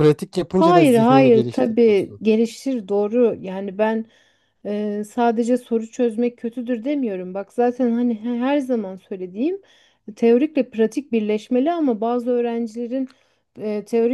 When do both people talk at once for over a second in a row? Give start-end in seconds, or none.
0.6-2.2